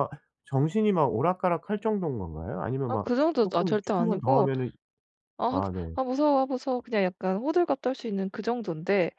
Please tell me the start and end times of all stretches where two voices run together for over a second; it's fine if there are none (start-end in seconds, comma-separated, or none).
2.9-4.5